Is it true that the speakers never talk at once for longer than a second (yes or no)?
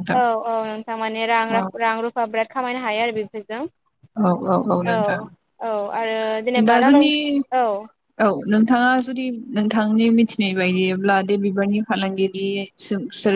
yes